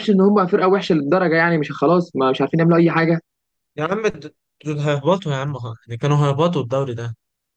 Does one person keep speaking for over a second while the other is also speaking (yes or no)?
no